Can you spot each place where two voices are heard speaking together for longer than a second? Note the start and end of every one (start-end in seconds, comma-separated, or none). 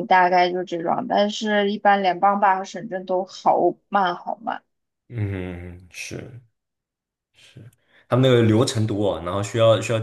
none